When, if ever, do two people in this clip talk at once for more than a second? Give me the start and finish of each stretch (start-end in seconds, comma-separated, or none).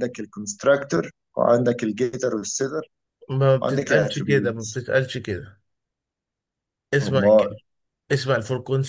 3.6-4.8